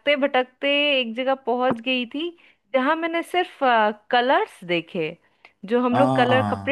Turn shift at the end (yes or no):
no